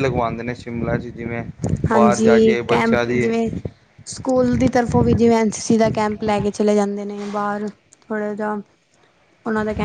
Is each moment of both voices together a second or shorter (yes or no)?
no